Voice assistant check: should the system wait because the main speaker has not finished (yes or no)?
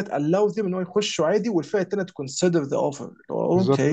no